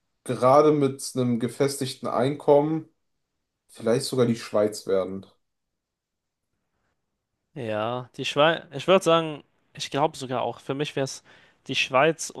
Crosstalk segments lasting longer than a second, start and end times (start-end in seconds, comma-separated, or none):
none